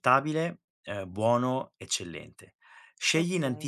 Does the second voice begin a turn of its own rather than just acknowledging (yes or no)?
no